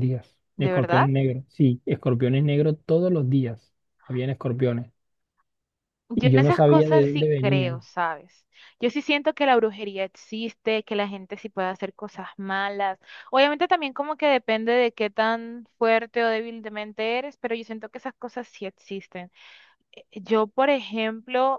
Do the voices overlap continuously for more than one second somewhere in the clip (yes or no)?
yes